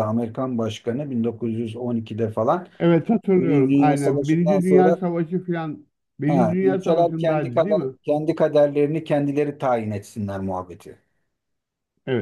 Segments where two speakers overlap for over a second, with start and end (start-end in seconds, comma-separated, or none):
3.4-5.0, 6.3-7.9